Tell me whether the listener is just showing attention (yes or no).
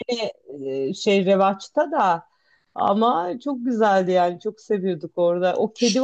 yes